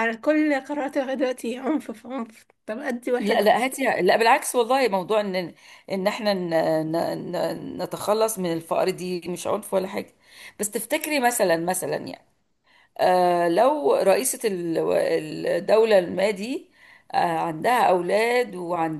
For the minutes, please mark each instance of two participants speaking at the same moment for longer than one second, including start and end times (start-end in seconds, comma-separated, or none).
none